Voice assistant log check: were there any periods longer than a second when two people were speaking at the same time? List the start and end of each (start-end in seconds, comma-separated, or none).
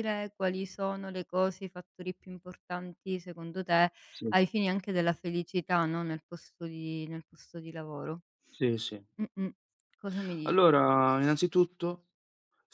none